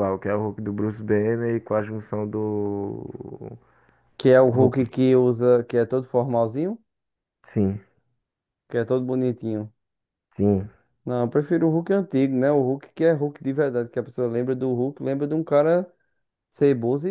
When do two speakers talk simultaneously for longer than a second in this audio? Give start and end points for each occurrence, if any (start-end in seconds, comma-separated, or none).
none